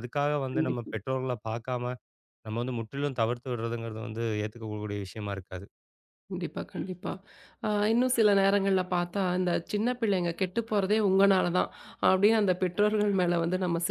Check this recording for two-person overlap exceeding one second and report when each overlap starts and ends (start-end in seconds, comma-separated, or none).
none